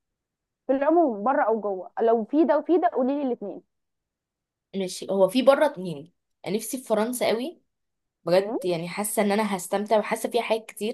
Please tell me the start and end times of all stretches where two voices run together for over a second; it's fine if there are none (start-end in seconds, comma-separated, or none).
none